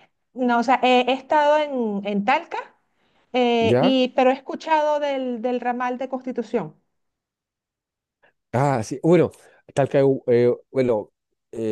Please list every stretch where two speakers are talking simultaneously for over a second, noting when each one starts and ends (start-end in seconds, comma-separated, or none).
none